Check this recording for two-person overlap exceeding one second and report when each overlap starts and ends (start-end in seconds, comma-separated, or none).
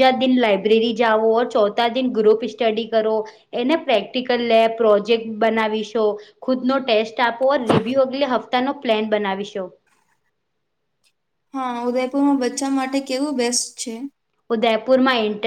none